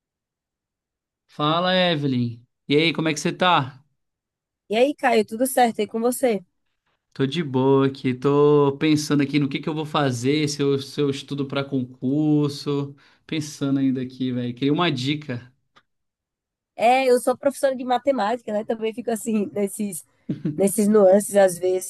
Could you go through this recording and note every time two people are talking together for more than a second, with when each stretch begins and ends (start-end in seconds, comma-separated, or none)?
none